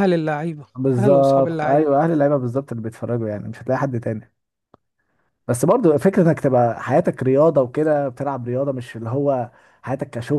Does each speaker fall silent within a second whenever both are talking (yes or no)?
no